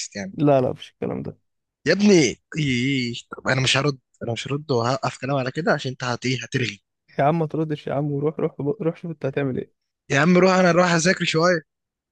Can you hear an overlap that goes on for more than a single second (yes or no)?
no